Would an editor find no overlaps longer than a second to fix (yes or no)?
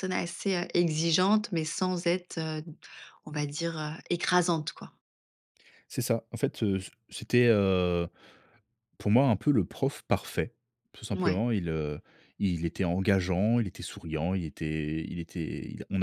yes